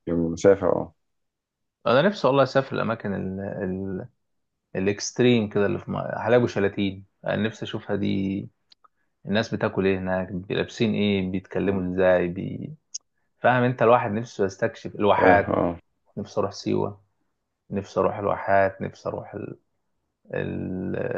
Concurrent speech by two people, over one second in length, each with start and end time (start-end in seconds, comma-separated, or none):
none